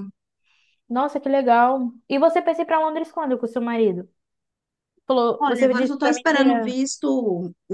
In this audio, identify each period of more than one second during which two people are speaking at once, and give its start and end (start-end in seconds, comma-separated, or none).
5.4-6.8